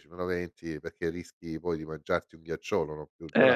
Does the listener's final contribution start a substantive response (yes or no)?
no